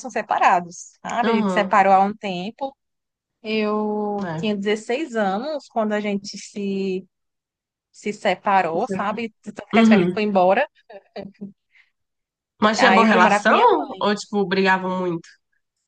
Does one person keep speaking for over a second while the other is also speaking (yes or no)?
yes